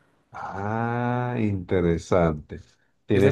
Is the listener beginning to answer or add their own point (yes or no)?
yes